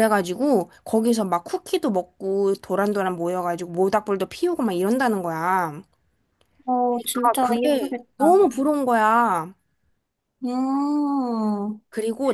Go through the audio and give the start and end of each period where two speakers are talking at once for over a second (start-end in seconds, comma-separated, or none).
6.9-8.4